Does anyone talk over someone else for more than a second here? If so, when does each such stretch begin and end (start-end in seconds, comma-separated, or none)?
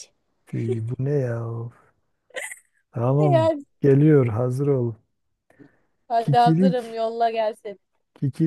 none